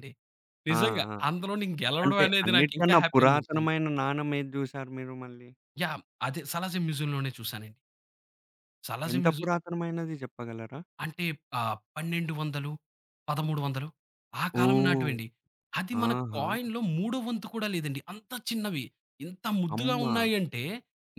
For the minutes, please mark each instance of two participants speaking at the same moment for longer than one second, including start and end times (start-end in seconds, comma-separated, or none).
2.0-3.7